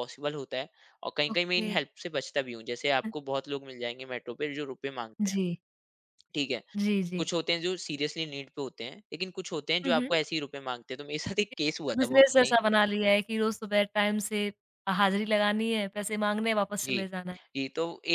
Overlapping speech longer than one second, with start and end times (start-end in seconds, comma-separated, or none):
none